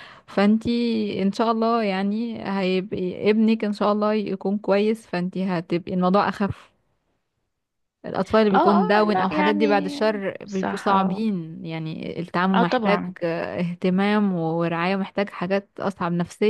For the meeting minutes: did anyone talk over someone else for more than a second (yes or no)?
yes